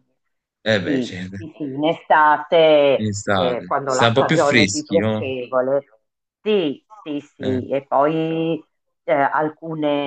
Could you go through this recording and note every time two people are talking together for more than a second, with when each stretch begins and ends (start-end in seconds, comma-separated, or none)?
3.0-5.3